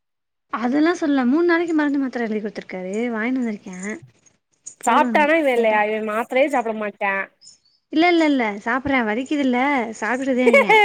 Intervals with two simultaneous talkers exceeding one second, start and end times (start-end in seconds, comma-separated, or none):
none